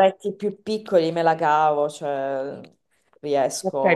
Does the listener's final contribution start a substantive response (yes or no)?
yes